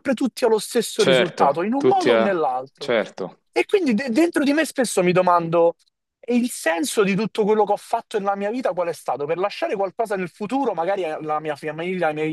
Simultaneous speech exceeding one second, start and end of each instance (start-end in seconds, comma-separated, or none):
0.9-2.9